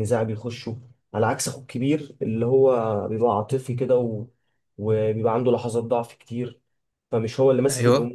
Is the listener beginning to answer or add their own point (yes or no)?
no